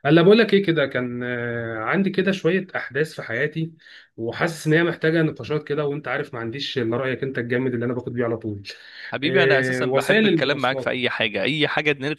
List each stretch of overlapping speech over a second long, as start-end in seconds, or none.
9.2-11.0